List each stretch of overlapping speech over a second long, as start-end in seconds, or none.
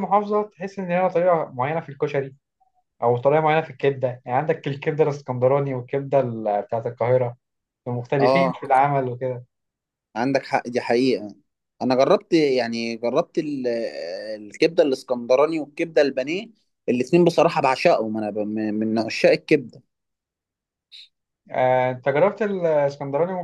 none